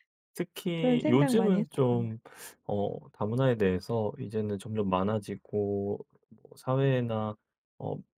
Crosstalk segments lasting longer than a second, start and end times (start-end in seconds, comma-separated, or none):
0.8-2.2